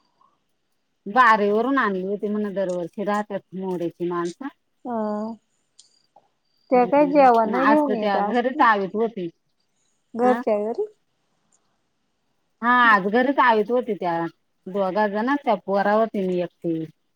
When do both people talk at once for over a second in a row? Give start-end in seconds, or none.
6.8-8.6